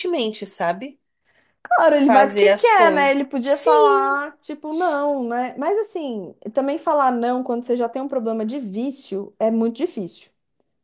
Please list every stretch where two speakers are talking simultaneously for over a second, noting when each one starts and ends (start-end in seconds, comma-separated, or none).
1.9-4.2